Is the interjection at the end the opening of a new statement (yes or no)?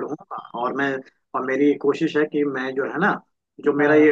no